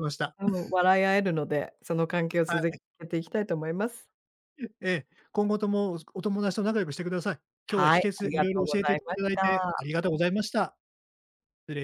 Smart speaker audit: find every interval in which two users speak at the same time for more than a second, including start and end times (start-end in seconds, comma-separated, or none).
7.7-9.8